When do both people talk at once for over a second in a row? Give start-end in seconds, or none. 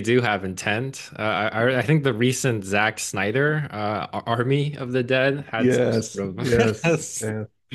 5.6-7.0